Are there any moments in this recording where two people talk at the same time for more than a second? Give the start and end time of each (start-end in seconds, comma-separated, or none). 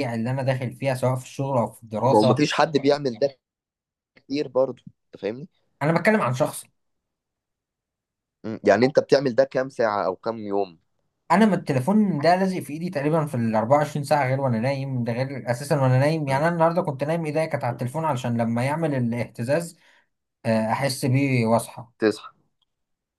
none